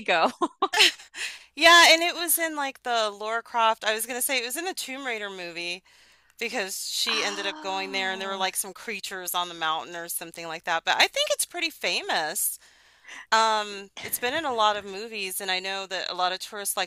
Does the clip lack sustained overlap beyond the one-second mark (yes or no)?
no